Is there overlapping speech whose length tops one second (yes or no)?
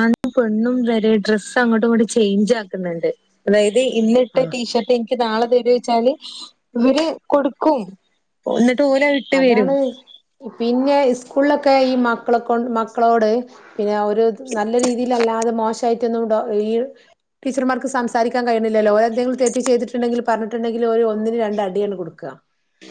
no